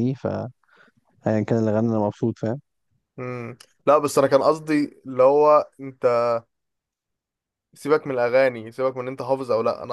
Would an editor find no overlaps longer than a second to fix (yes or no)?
yes